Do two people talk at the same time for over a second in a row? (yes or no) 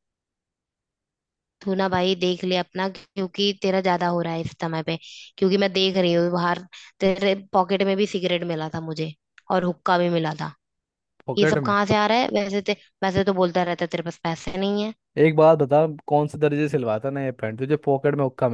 no